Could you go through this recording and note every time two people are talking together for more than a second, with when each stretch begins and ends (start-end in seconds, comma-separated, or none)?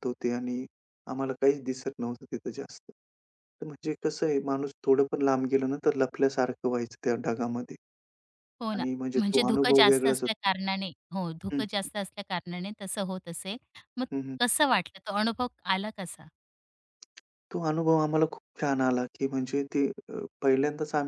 8.7-10.3